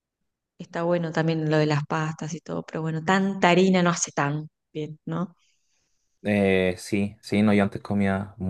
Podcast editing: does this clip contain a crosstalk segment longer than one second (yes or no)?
no